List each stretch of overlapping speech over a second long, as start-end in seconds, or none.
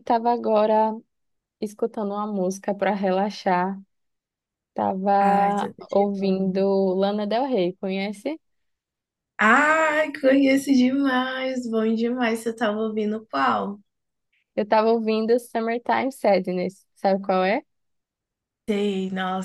5.2-6.6